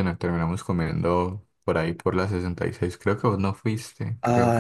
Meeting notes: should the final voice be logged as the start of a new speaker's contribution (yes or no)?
yes